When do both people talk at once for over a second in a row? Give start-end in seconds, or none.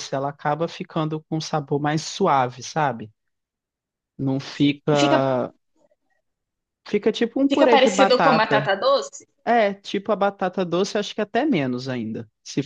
7.5-8.7